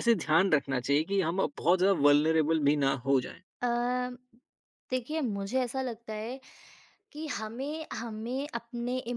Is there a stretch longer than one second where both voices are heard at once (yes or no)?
no